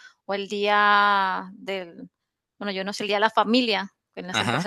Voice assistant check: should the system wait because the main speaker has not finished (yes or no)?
yes